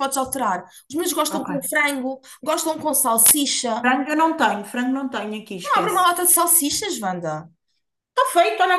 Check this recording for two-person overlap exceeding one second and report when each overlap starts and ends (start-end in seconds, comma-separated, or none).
none